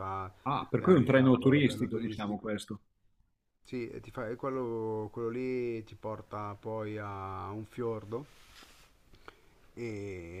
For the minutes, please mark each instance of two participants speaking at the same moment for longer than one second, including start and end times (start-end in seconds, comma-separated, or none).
0.8-2.5